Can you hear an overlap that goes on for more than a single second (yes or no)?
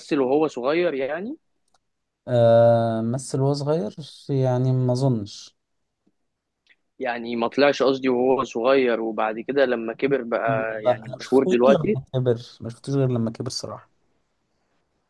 yes